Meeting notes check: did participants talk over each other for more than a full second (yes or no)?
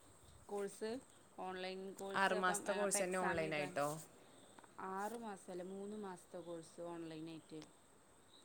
yes